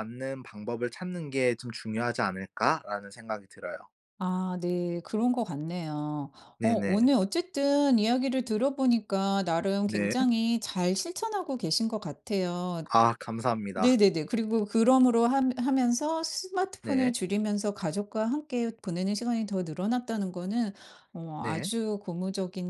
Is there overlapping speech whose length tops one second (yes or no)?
no